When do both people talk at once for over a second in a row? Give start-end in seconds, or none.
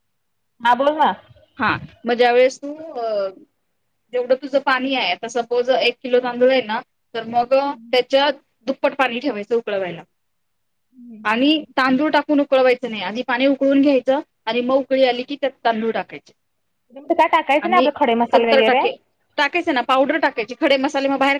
none